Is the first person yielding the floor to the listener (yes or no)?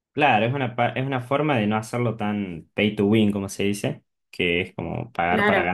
yes